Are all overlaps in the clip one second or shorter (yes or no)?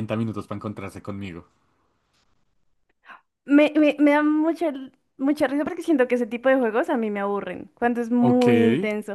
yes